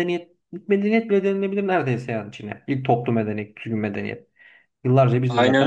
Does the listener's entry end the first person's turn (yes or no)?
yes